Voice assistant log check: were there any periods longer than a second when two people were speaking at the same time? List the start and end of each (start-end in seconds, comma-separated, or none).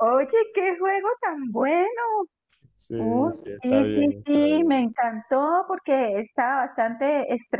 3.0-4.9